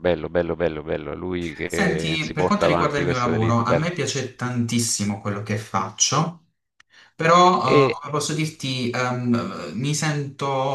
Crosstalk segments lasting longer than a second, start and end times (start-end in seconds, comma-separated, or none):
1.7-3.9